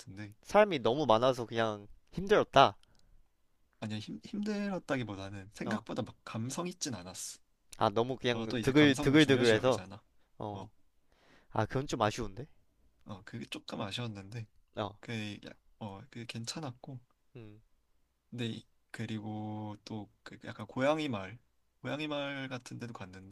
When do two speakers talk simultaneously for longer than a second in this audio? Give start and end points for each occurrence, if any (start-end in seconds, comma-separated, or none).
8.3-9.8